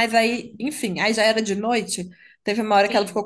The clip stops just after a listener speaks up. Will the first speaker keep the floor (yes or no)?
yes